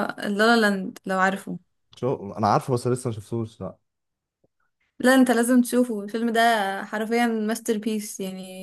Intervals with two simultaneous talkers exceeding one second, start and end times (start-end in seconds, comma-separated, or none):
none